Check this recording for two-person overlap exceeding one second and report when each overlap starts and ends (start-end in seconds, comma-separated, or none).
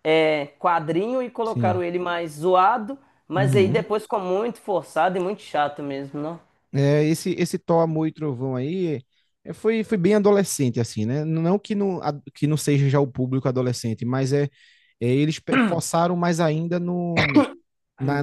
none